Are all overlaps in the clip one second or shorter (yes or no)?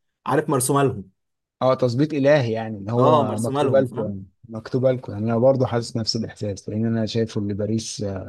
no